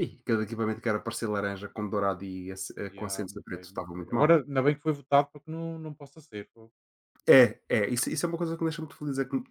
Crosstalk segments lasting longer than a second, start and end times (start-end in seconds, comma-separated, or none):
2.9-4.4